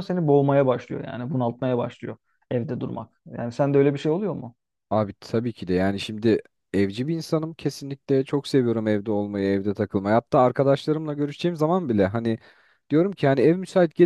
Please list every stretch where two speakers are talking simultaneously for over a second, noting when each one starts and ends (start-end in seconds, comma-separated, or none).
none